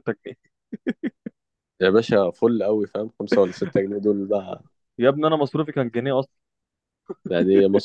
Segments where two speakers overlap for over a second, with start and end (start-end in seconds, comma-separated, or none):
none